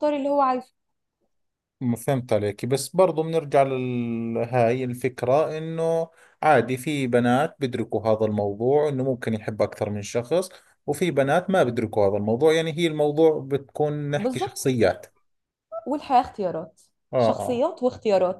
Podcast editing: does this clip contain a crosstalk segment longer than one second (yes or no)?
no